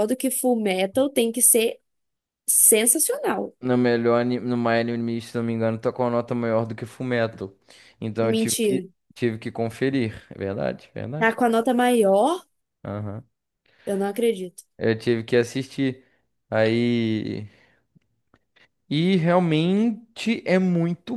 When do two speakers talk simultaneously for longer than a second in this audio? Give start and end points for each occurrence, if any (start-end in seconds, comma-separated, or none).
none